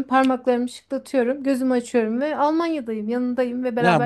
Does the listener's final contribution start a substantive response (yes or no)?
yes